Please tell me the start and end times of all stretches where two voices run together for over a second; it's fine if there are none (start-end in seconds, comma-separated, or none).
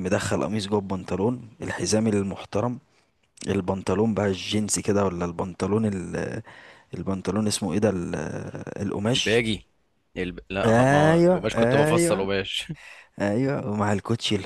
10.7-12.3